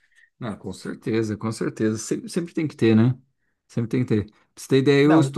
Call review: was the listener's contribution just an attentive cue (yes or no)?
yes